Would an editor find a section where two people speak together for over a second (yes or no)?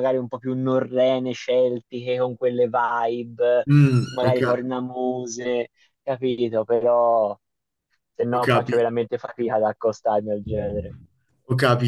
no